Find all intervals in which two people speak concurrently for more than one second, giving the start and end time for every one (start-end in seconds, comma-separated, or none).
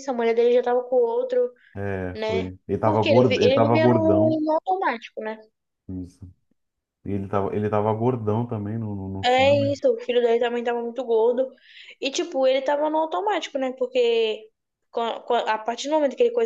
2.1-4.4